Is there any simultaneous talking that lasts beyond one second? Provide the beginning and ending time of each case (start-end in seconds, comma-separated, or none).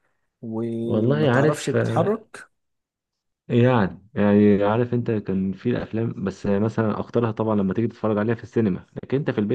0.8-2.2